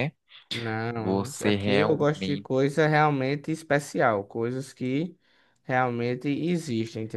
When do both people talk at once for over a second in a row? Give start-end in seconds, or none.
0.9-2.6